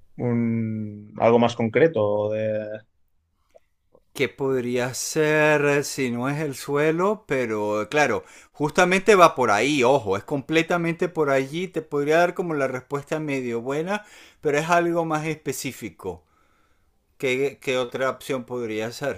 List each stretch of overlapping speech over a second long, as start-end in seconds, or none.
none